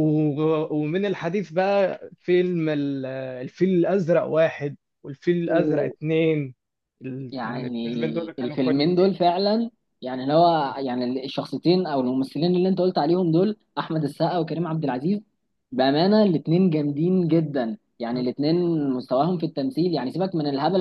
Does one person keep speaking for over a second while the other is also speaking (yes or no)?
yes